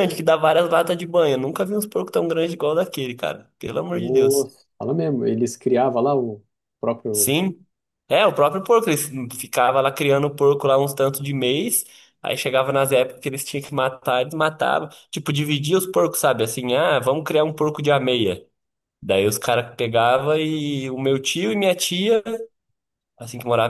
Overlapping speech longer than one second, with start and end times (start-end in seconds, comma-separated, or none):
none